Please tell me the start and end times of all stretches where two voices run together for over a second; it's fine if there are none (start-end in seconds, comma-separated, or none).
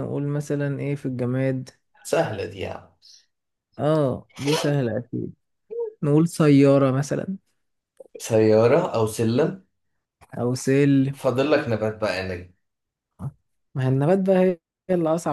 none